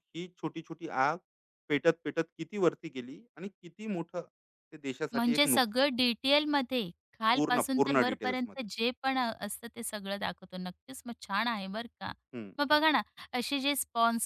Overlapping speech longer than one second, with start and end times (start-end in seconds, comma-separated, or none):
7.3-8.7